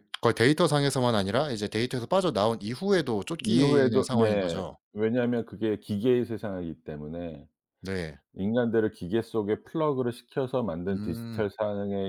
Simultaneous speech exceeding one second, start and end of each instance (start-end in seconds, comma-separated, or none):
3.4-4.8